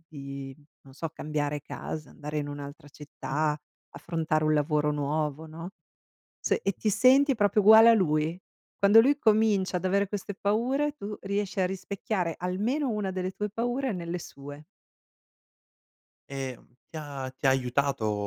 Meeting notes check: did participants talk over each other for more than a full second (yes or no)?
no